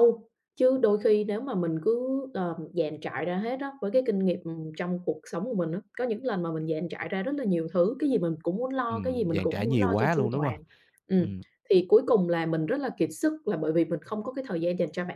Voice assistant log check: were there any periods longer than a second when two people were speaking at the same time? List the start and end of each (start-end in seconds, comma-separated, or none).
8.9-10.6